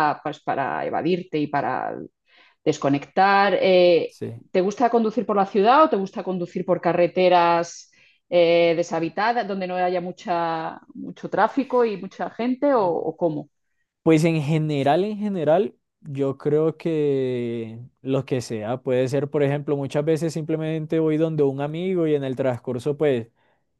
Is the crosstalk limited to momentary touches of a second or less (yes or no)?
yes